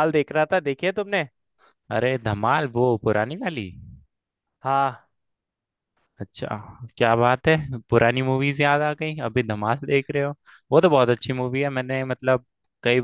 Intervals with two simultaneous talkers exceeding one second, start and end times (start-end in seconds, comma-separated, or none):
none